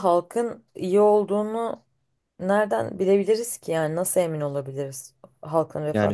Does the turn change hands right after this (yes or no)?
yes